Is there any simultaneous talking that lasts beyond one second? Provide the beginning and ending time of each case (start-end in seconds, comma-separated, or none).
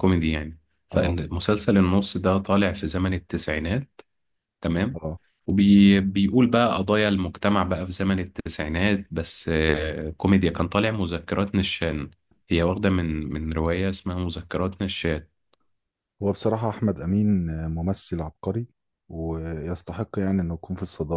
none